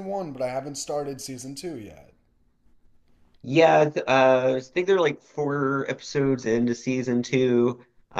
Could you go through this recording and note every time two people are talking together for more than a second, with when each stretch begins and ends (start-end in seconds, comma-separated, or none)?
none